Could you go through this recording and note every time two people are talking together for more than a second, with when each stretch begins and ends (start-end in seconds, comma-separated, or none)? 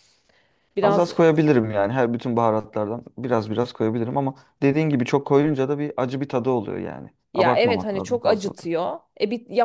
7.3-8.6